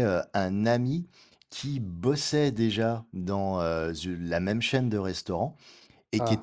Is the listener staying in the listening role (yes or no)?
yes